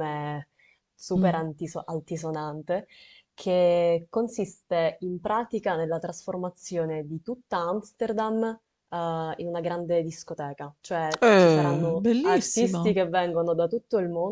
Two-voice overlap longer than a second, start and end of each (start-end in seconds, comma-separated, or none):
11.2-13.0